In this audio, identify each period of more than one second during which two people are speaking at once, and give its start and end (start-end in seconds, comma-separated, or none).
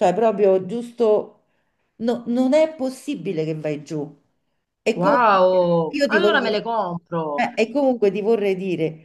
4.9-6.6